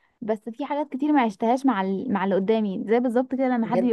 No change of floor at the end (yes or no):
yes